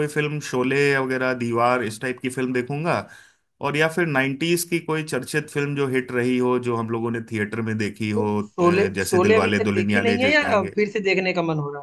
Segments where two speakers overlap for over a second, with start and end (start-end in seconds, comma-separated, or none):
8.1-10.8